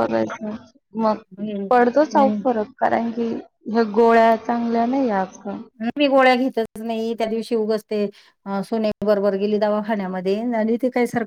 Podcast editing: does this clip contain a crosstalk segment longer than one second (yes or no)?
no